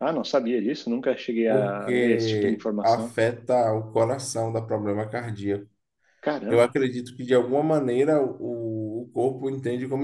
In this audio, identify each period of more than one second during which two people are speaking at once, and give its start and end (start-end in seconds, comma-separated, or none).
1.5-3.1